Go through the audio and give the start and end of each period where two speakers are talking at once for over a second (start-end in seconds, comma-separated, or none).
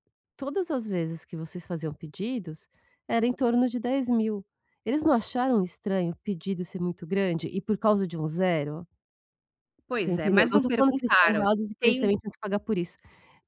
10.0-12.1